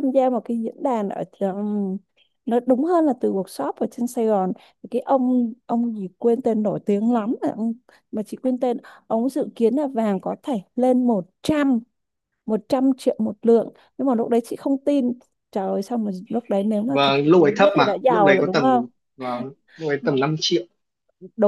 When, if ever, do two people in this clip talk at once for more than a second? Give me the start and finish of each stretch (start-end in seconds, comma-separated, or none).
16.9-18.8